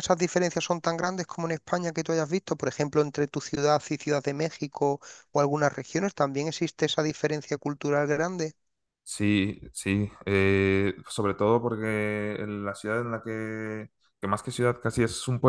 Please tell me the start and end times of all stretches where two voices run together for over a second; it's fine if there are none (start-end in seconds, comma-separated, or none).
none